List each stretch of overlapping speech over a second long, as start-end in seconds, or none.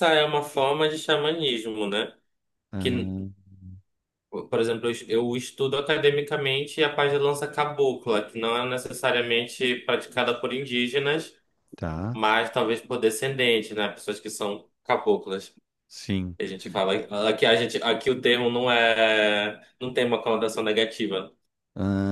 none